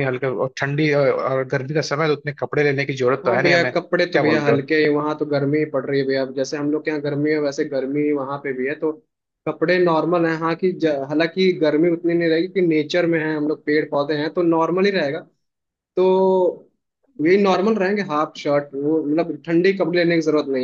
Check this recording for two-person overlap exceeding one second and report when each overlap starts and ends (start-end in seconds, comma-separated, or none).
3.3-4.6